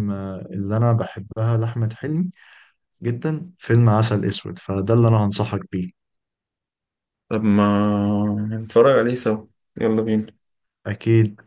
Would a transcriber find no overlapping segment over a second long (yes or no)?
yes